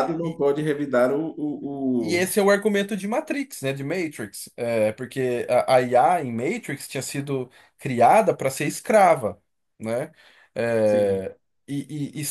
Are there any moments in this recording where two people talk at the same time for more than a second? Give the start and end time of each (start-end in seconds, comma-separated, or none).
none